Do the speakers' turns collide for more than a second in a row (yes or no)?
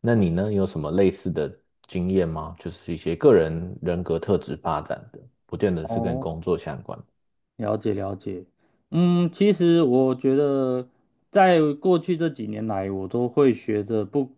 no